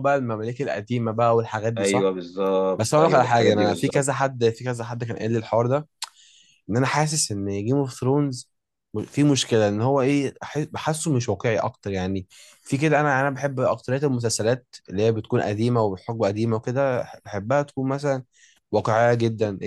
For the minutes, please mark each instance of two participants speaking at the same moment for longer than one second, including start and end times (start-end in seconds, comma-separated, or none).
2.8-4.3